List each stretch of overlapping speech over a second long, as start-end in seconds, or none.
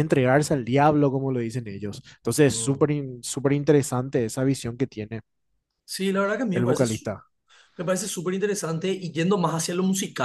none